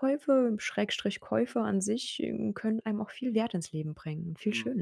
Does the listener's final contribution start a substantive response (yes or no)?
yes